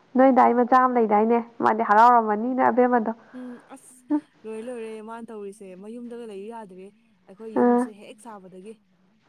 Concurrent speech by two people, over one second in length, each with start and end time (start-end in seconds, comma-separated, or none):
none